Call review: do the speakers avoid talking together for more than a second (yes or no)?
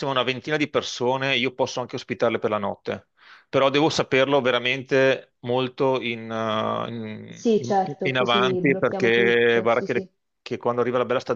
no